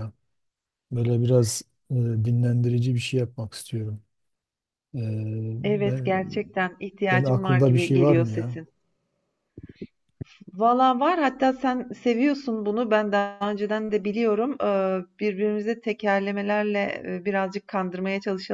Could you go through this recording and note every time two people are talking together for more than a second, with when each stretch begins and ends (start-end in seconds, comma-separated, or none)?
7.1-8.6